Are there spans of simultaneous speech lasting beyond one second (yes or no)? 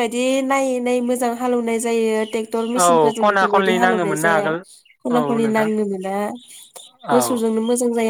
yes